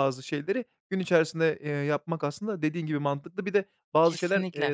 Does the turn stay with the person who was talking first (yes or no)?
yes